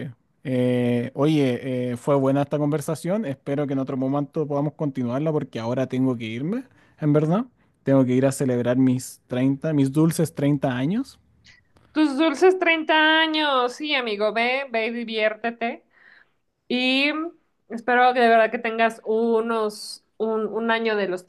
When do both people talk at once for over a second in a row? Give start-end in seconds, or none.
none